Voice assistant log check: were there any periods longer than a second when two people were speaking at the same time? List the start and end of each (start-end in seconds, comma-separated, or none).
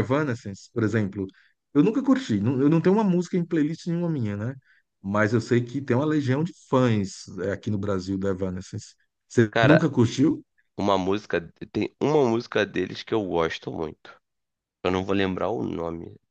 none